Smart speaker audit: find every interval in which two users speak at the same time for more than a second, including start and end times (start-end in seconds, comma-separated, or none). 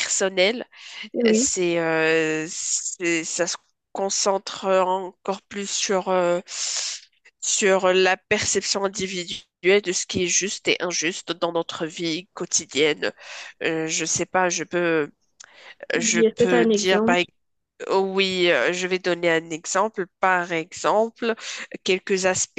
16.0-17.2